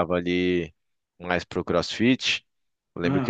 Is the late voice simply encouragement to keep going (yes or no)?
yes